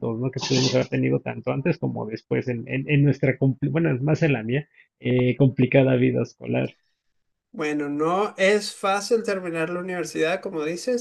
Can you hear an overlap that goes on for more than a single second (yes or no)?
no